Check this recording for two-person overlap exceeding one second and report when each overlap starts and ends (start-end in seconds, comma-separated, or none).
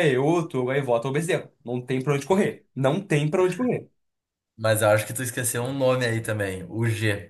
none